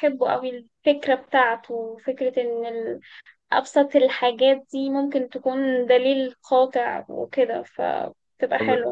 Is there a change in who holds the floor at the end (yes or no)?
yes